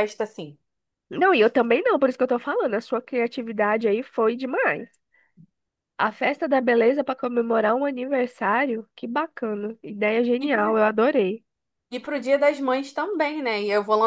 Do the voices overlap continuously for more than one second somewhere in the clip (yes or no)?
no